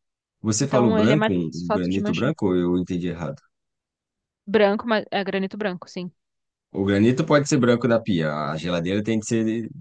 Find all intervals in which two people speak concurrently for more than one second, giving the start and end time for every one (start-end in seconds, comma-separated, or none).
0.6-2.4